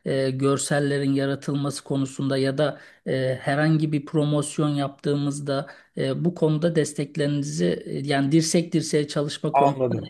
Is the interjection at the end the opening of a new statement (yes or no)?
yes